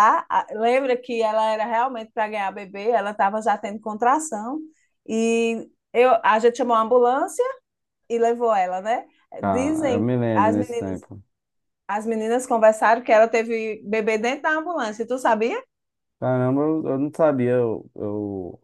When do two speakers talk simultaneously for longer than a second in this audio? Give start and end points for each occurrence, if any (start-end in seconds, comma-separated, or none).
9.4-11.1